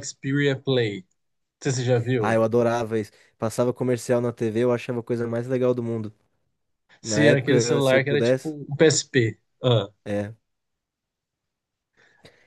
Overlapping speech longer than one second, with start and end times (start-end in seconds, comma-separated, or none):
7.0-8.5